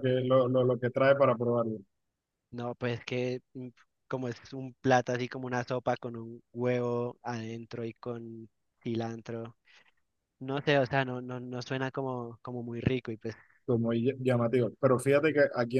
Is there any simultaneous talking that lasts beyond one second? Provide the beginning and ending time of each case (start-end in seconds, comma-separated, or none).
none